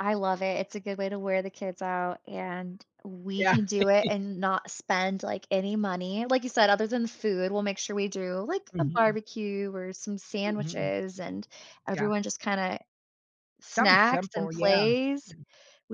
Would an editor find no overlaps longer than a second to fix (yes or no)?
no